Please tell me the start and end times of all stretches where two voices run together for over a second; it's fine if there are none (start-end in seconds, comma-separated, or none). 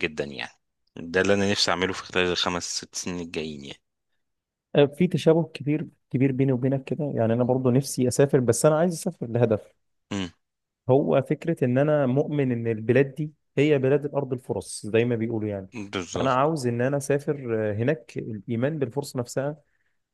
none